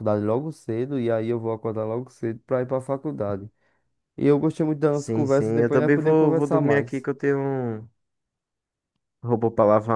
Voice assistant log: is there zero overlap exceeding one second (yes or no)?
no